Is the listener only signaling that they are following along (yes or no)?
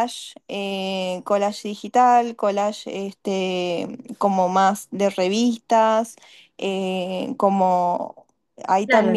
no